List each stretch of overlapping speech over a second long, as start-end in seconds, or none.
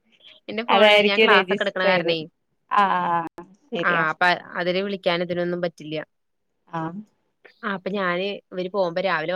0.8-2.2